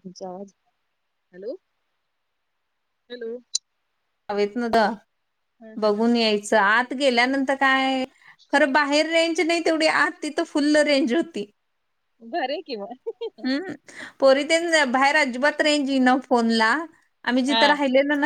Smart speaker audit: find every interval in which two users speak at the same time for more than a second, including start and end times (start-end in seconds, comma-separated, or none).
none